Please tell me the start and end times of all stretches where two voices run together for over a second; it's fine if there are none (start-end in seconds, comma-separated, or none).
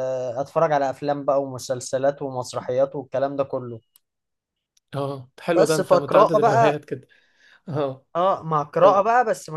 5.5-6.7